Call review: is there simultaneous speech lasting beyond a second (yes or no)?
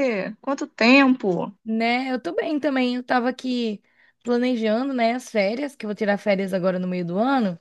no